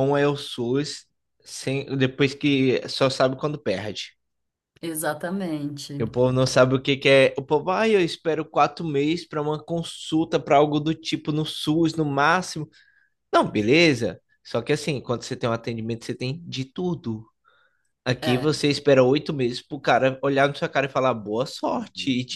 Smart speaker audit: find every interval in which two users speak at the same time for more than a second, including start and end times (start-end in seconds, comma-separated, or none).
none